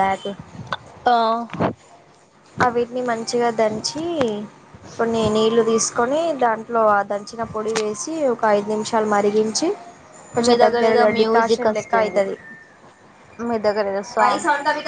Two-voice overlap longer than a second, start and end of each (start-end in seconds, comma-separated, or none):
10.4-12.2